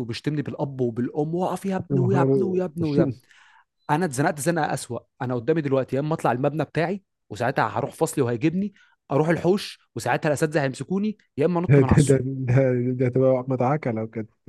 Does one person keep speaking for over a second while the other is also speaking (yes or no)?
yes